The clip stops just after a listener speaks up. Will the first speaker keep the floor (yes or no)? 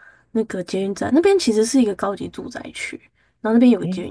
yes